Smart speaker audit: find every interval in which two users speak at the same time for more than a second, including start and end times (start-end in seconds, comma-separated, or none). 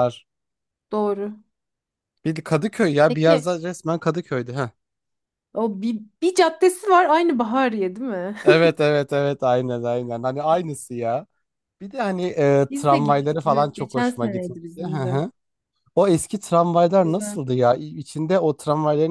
12.7-15.2